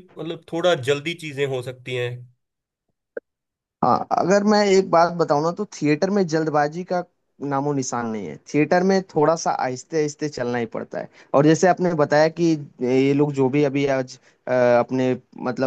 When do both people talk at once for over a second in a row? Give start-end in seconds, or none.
none